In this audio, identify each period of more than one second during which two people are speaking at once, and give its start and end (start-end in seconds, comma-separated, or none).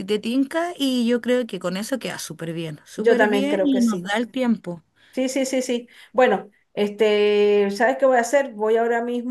2.9-4.1